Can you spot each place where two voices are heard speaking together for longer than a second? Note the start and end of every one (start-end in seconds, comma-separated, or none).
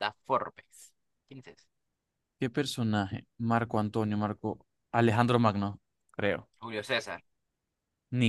none